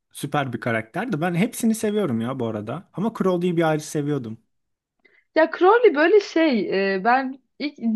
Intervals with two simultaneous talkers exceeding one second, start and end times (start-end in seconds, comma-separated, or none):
none